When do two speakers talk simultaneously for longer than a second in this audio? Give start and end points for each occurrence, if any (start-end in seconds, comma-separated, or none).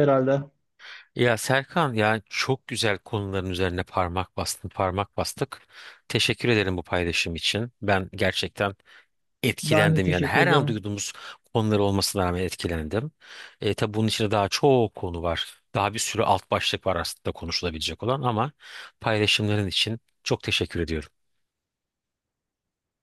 9.6-10.9